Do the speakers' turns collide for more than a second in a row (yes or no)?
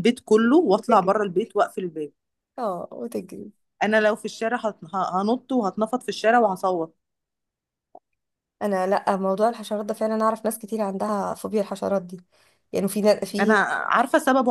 no